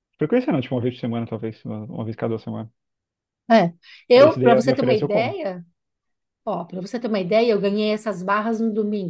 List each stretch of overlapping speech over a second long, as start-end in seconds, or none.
4.1-5.4